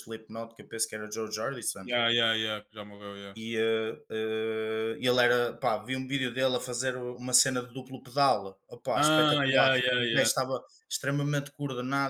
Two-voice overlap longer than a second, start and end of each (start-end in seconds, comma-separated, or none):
8.9-10.3